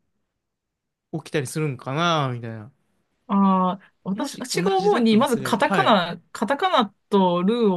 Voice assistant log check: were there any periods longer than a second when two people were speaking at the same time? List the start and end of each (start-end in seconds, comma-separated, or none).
4.1-6.0